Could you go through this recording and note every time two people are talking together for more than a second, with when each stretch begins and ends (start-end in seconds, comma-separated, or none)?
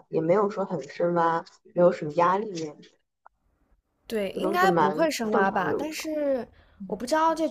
4.3-6.0